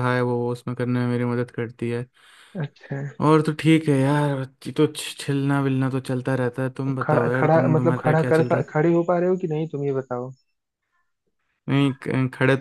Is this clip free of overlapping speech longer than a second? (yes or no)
no